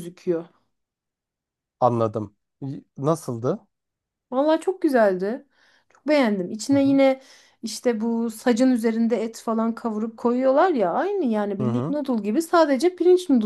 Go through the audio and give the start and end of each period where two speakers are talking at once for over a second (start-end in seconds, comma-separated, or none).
none